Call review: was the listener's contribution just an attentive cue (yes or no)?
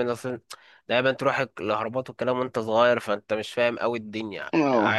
no